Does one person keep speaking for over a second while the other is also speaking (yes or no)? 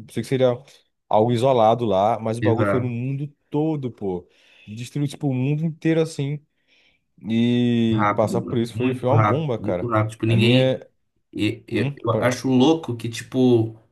yes